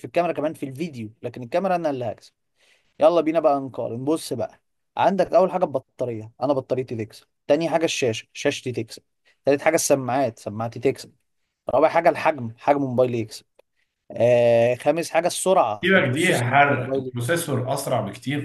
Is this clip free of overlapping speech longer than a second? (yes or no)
no